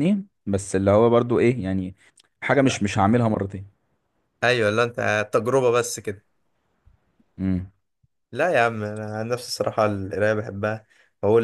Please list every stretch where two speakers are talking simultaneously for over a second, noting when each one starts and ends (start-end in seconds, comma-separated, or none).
none